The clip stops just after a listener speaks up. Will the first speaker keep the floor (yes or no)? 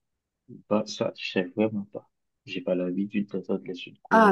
no